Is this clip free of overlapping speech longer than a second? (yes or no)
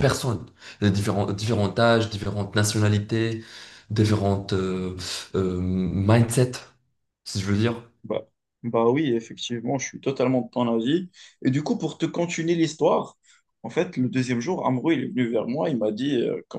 yes